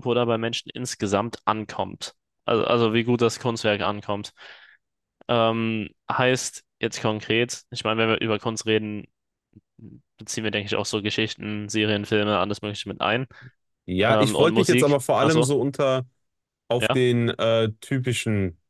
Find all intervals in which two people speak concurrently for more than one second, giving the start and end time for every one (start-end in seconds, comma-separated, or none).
14.1-15.5